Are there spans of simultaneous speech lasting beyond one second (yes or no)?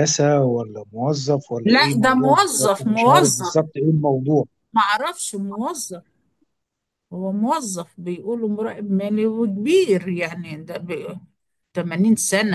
yes